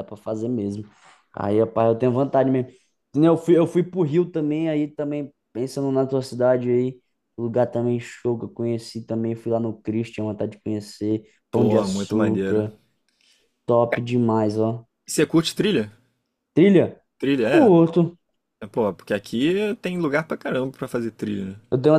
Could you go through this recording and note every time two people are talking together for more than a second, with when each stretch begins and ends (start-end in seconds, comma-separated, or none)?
11.5-12.7